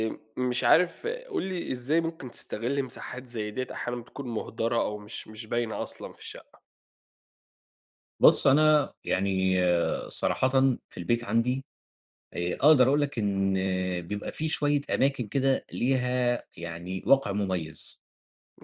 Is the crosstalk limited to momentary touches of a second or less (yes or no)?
yes